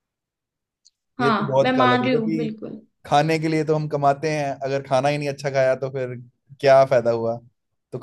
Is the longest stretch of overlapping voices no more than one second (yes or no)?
no